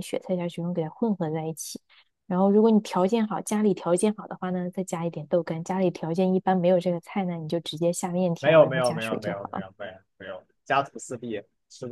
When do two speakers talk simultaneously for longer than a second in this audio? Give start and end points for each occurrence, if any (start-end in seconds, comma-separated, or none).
8.4-9.6